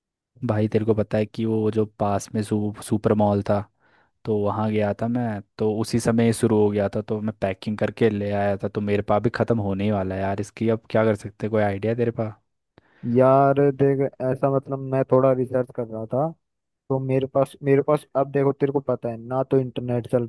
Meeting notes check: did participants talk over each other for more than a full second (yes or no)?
no